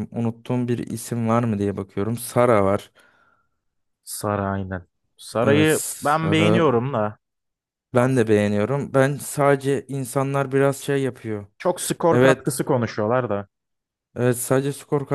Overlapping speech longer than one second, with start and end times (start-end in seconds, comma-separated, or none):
5.4-6.6